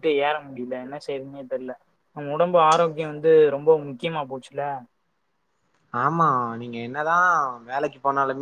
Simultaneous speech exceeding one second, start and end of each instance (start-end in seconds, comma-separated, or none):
none